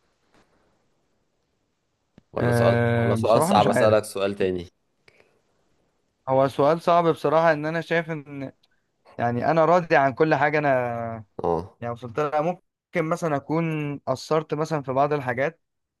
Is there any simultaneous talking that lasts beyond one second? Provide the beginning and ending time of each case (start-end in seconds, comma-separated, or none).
2.4-4.0